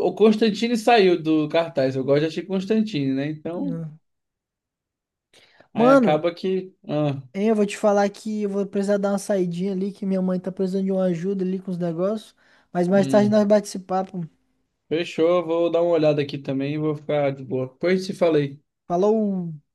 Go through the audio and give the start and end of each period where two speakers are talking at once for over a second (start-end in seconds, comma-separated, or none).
none